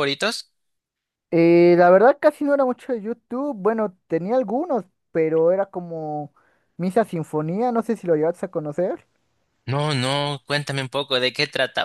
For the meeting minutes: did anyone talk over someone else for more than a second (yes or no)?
no